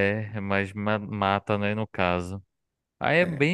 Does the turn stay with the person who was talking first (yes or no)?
yes